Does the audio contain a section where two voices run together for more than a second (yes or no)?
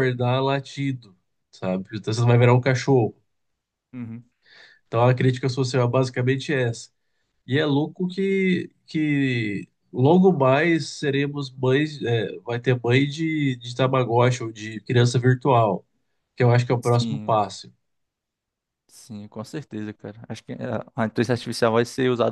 no